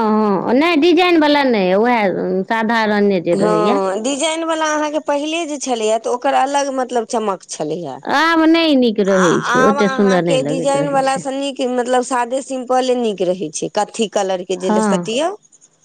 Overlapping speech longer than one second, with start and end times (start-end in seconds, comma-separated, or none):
9.5-11.2